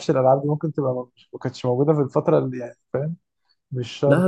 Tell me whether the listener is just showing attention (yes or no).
no